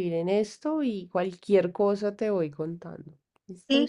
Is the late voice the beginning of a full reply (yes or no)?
yes